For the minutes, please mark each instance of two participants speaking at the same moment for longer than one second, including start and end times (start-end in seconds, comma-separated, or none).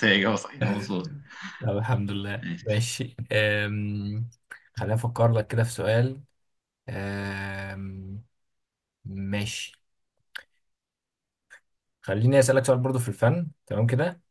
none